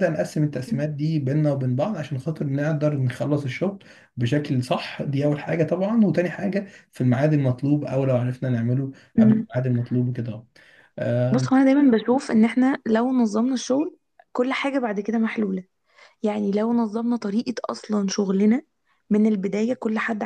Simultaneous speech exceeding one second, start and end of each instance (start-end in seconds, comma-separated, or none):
none